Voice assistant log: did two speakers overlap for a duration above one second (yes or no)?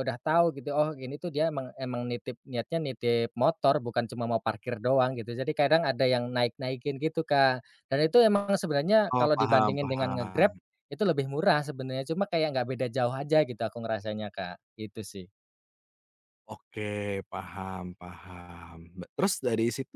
yes